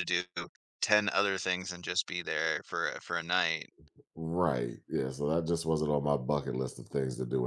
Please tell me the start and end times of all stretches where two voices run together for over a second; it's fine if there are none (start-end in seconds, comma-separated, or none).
none